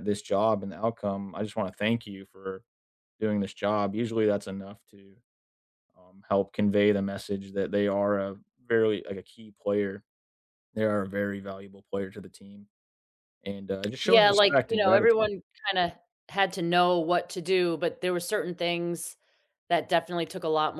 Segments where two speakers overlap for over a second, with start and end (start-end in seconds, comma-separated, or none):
14.0-15.3